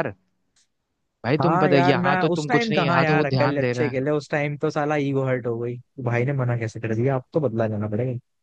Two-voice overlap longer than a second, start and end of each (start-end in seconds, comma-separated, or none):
1.4-4.0